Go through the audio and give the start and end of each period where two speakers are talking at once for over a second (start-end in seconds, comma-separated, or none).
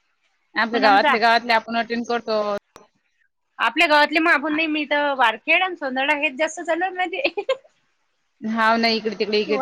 none